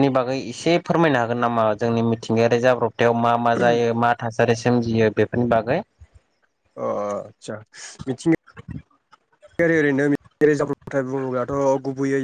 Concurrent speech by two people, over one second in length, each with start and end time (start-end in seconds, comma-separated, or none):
none